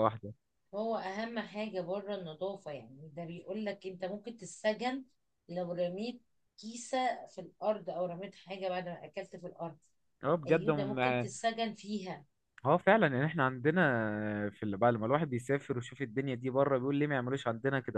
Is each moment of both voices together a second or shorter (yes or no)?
yes